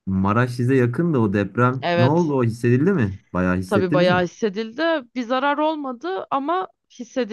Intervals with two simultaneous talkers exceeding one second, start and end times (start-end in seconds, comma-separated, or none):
none